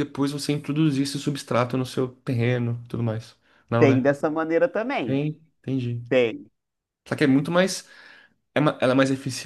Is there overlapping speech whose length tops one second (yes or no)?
no